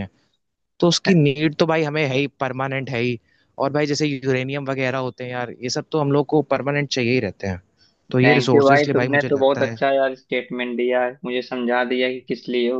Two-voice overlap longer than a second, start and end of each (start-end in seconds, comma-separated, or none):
8.2-9.8